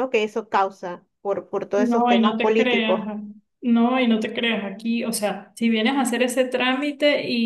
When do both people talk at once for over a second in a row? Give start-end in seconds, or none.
1.8-3.0